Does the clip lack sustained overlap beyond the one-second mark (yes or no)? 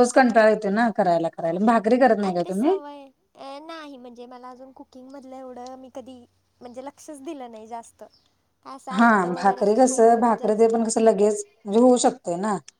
no